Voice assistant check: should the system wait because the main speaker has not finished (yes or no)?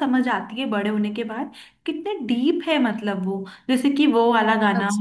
yes